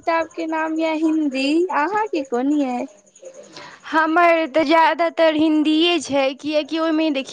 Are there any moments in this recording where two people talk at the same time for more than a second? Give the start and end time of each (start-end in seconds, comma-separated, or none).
none